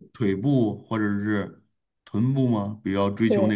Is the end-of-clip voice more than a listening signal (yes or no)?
no